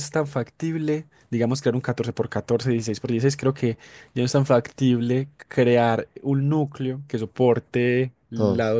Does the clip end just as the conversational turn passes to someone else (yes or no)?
no